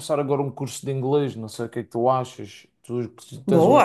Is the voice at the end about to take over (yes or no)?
yes